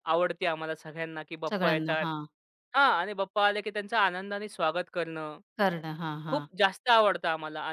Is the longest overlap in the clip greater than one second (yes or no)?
no